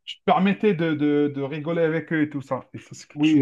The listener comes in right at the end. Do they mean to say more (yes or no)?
yes